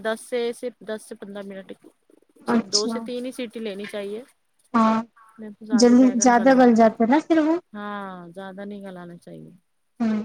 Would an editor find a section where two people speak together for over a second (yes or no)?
yes